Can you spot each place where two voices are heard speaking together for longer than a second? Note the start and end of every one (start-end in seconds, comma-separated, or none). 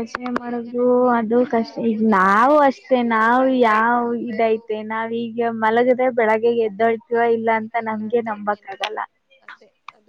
1.9-4.0